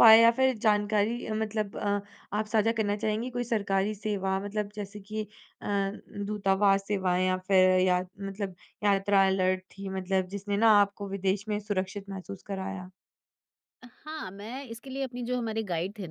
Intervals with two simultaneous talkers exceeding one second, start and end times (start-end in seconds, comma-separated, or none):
none